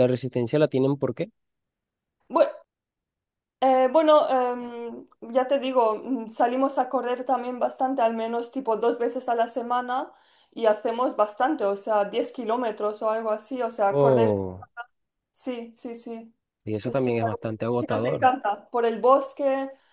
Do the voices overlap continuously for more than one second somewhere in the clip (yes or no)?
yes